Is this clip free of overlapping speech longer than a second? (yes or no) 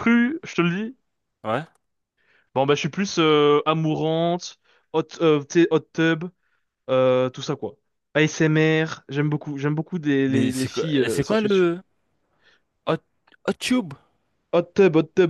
no